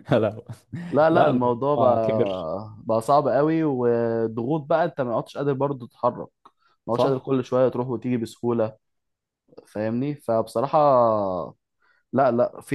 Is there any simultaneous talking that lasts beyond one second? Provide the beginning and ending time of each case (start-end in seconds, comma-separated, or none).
1.1-2.5